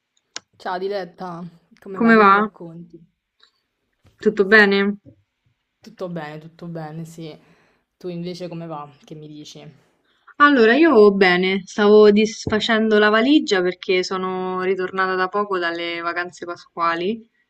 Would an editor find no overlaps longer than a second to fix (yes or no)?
yes